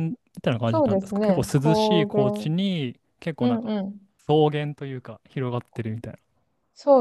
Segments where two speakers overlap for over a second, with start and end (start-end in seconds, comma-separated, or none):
0.7-2.5